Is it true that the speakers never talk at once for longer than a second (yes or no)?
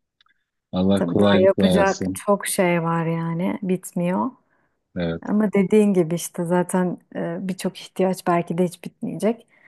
no